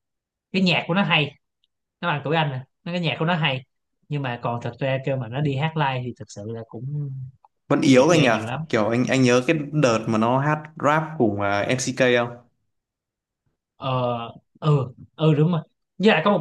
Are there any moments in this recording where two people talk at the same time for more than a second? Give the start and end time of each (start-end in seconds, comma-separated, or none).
none